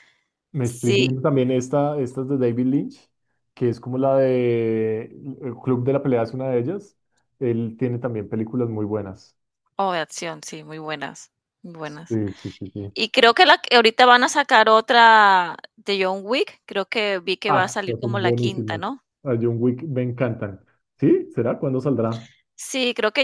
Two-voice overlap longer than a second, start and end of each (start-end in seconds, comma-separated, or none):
17.5-18.8